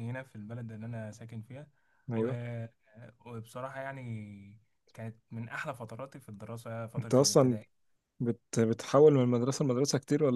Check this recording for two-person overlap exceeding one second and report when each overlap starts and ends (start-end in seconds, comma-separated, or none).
none